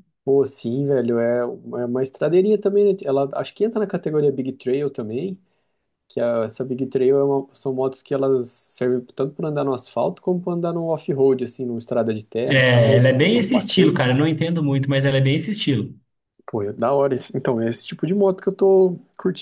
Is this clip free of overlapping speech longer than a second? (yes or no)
no